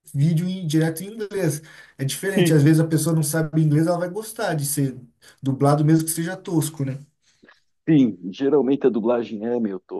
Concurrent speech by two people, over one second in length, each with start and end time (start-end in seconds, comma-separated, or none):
none